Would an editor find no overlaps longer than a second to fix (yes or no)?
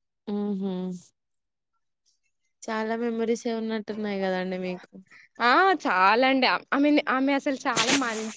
yes